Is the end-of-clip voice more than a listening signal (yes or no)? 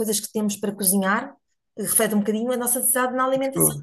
no